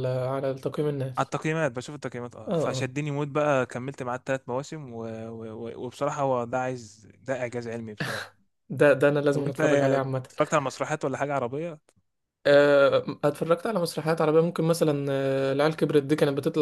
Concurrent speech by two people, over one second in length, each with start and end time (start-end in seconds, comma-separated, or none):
none